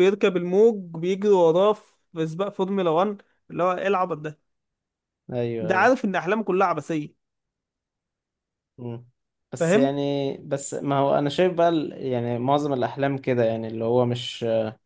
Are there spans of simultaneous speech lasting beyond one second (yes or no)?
no